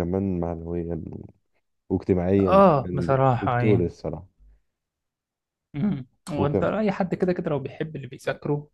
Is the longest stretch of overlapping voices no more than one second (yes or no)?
no